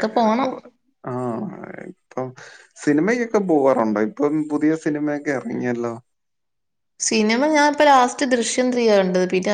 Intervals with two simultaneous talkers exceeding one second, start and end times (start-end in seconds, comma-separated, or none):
none